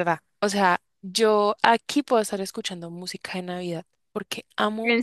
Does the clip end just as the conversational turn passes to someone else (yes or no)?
no